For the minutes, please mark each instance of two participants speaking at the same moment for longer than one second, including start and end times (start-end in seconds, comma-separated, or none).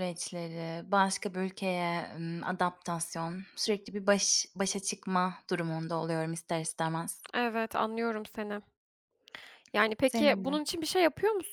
none